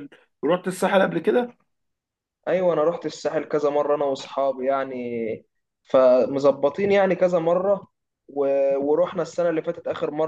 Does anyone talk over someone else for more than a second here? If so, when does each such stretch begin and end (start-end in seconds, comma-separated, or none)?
none